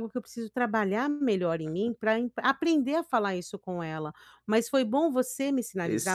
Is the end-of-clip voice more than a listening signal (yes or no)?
no